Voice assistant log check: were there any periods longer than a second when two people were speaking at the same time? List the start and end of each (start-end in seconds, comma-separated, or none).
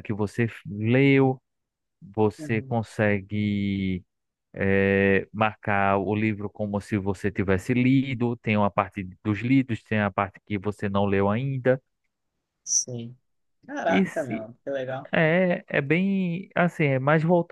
none